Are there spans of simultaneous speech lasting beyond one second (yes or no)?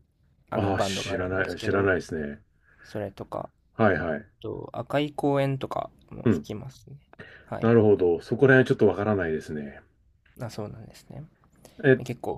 yes